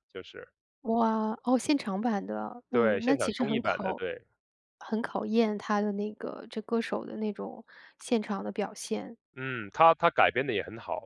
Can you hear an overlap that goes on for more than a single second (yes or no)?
yes